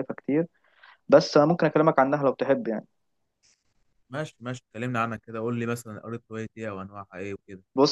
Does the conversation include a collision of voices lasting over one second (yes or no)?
no